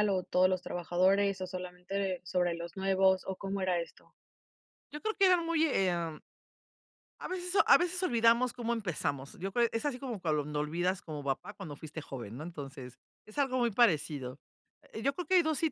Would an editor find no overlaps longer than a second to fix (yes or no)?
yes